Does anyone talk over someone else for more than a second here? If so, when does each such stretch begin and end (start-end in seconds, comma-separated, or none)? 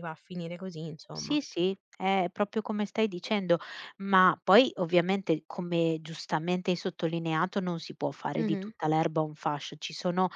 none